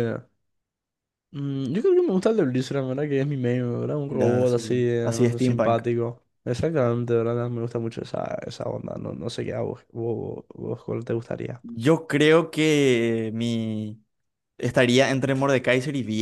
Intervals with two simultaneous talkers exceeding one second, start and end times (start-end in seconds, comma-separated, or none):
4.1-5.8